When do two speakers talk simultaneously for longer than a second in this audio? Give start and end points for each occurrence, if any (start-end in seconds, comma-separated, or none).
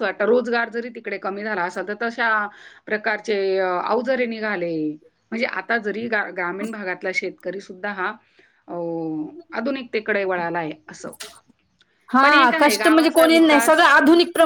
12.2-13.9